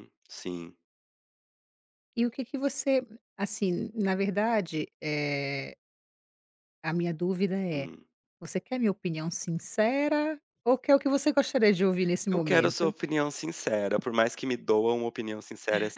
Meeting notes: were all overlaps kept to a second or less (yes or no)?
yes